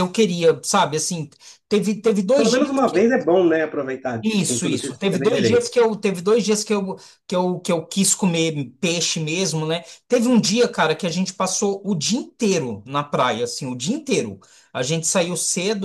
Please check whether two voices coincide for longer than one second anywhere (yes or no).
yes